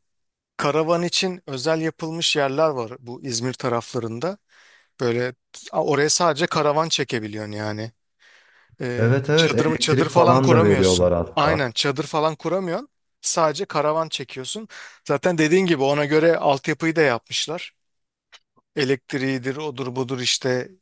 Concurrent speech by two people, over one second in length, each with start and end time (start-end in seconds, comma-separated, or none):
9.0-11.7